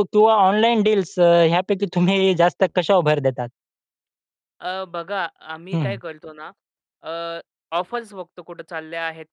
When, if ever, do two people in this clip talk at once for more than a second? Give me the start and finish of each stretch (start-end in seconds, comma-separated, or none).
none